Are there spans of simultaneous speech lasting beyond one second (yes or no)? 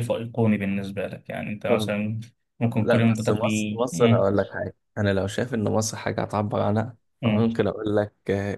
yes